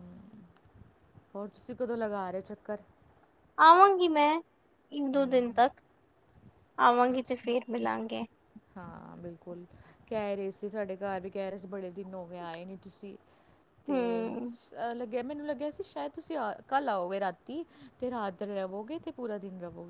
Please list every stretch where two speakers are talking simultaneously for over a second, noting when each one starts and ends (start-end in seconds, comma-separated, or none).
none